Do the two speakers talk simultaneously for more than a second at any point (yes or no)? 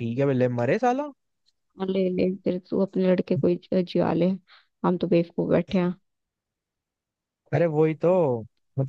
no